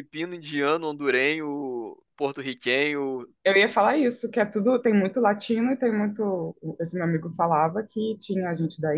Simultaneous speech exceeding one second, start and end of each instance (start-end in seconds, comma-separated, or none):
none